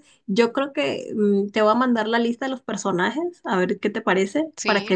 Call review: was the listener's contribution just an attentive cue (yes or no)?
yes